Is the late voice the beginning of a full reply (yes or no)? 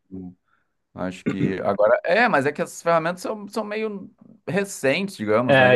yes